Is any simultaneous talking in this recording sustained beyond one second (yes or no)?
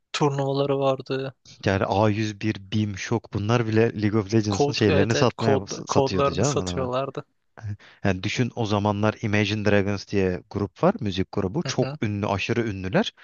yes